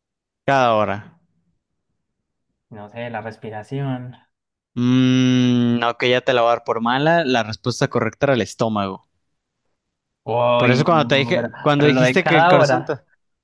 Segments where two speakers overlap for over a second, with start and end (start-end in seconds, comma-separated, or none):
10.6-12.9